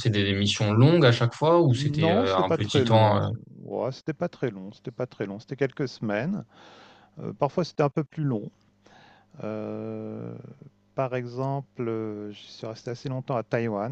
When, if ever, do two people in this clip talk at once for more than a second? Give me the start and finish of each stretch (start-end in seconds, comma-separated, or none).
1.7-3.3